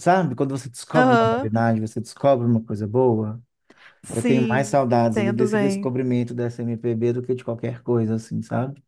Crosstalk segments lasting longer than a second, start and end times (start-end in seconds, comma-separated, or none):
4.1-5.9